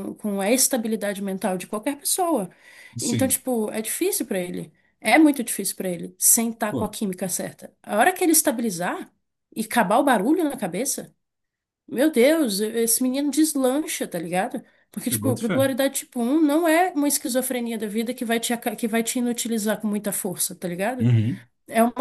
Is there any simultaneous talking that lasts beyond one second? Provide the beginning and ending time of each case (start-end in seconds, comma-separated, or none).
none